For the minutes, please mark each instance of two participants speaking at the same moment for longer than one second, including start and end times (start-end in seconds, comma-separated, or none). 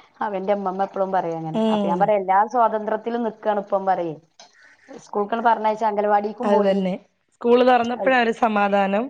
none